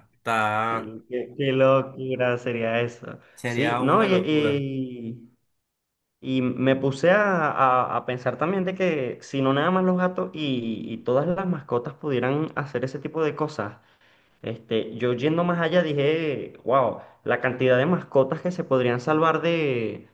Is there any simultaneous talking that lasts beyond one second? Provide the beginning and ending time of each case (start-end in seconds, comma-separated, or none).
3.4-4.7